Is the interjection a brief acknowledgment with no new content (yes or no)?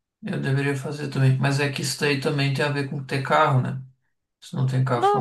no